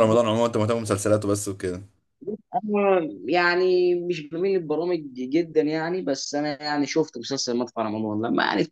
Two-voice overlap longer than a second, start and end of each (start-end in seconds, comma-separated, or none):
none